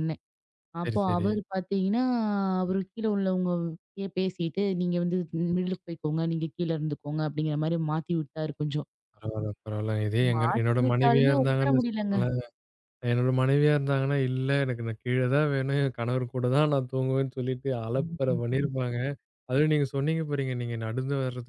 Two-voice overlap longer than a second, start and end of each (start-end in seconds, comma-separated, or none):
10.3-12.2